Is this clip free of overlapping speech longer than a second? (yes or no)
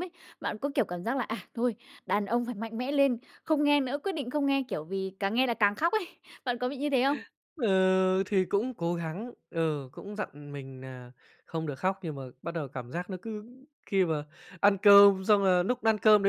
yes